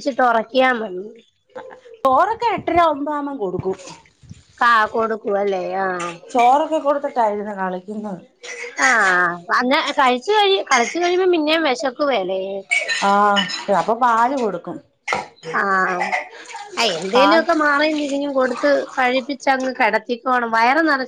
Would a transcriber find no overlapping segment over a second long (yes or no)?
yes